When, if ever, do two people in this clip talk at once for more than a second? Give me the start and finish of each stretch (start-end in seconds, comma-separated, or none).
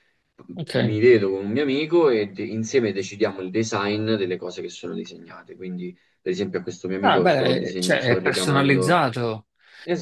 7.0-9.1